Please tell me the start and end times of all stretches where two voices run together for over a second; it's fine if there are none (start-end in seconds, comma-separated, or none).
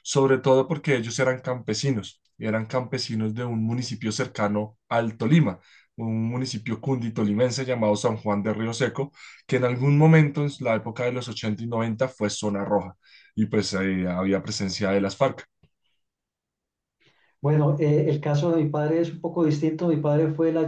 none